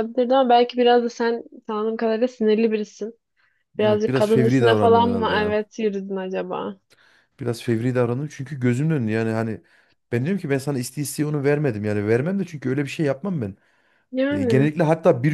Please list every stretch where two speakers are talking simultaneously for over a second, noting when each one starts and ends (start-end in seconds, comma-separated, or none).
3.8-5.6